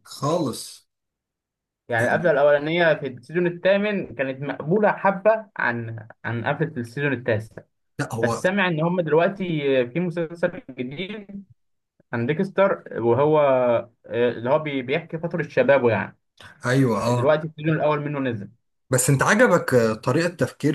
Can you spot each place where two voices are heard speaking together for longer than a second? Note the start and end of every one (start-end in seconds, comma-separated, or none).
none